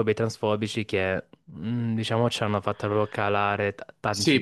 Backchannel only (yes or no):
no